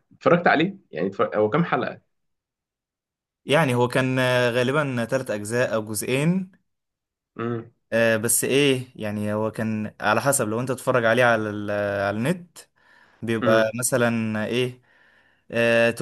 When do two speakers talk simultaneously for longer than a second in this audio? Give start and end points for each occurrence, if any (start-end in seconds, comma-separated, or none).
none